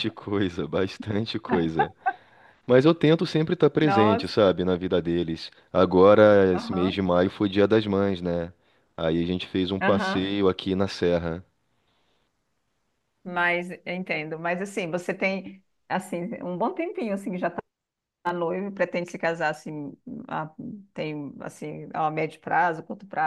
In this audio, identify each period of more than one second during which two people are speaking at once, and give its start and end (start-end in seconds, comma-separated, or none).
none